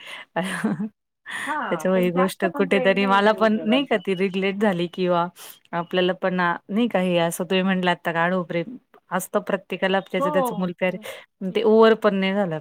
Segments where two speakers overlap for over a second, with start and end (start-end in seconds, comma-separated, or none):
1.7-4.0